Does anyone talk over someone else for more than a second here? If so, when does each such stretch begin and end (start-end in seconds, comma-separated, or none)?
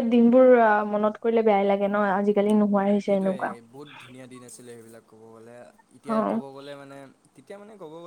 none